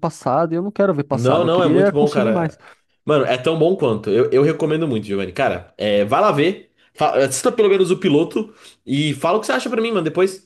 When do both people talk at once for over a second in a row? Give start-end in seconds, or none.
1.1-2.6